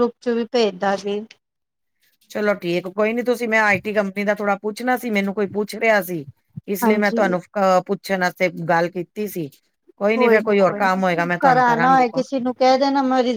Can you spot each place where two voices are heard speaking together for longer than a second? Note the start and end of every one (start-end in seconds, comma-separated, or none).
10.3-12.2